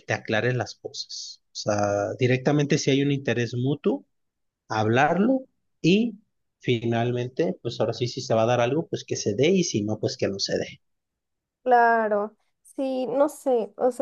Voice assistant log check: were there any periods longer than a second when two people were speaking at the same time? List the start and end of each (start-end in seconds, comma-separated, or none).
none